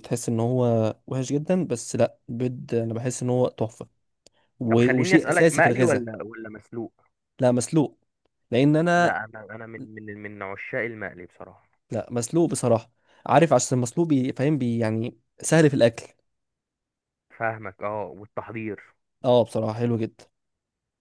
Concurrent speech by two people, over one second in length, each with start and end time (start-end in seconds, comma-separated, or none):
4.7-6.1